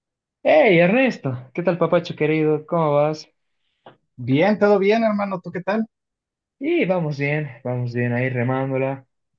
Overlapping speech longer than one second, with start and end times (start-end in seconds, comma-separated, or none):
none